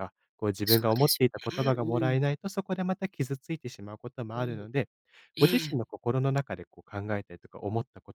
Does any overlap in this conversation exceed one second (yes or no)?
yes